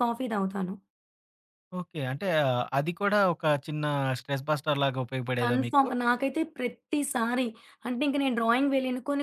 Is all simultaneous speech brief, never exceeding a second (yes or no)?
yes